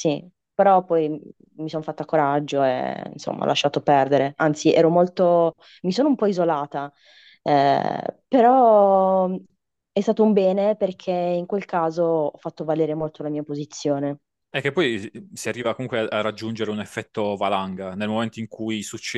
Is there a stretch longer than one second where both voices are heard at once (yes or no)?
no